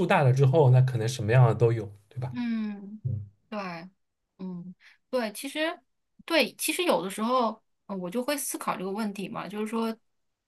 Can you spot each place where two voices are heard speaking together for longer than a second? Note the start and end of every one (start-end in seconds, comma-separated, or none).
none